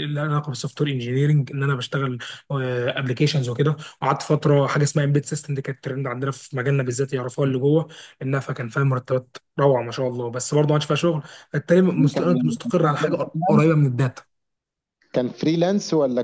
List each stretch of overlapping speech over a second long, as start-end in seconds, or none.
11.9-13.2